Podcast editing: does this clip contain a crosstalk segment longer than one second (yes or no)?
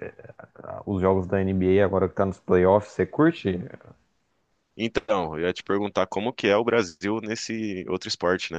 no